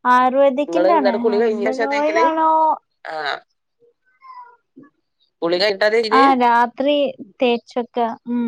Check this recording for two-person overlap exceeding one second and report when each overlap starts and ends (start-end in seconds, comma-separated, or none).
0.7-2.3